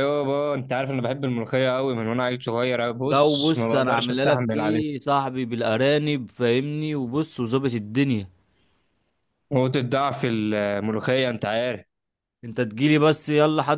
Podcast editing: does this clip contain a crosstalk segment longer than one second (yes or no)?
yes